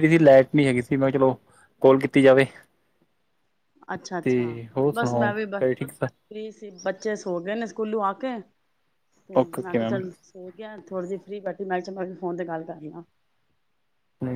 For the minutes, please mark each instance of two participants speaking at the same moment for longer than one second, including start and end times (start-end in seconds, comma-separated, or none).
4.9-6.3